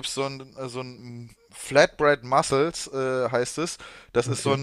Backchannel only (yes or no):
yes